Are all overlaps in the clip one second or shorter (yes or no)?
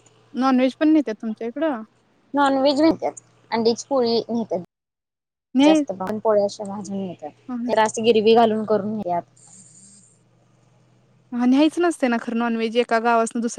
yes